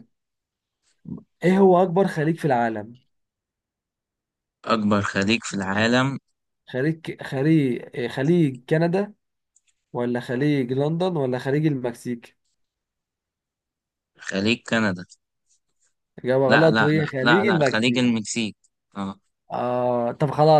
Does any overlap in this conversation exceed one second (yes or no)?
yes